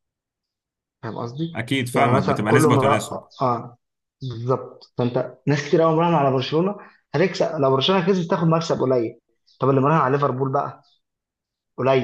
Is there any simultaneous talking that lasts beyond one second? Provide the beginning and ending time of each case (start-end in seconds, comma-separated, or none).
1.6-3.2